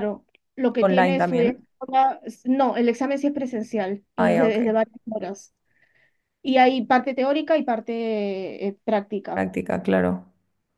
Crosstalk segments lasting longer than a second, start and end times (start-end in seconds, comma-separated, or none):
none